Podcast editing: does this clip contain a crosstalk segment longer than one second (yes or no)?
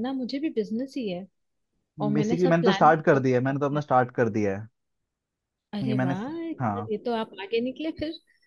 yes